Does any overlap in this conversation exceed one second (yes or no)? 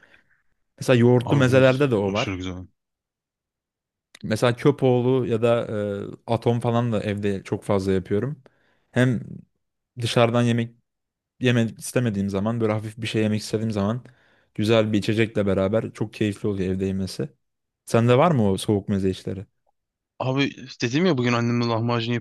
yes